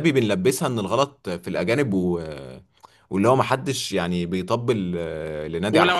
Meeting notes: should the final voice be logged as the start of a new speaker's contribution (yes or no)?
yes